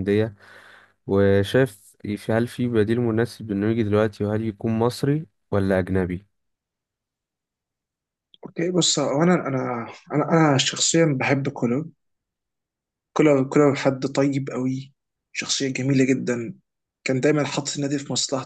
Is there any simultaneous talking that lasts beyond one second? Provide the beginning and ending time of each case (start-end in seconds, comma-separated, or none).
none